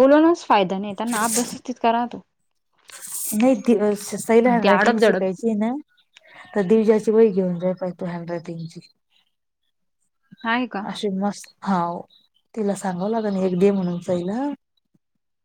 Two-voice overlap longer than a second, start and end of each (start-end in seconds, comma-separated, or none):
none